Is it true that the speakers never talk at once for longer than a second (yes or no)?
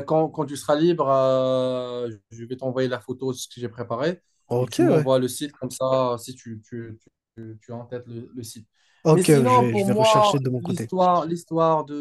no